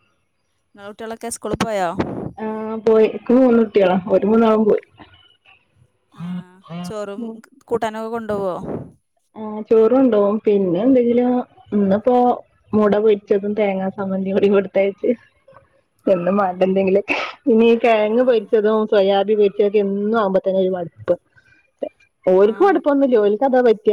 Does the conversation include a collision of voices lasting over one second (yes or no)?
no